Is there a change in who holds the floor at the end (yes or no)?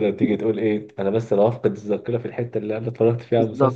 yes